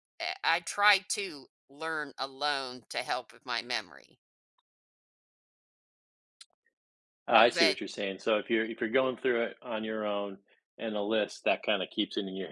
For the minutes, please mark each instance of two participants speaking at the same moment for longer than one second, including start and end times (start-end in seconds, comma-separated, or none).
none